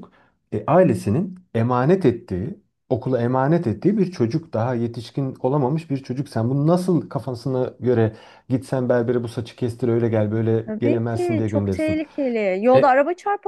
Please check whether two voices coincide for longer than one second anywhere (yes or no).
yes